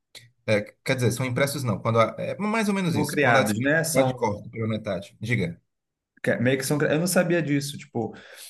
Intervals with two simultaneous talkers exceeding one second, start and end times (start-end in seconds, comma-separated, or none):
2.9-4.2